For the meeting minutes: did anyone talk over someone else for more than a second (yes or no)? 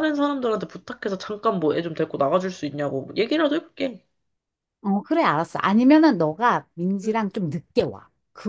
no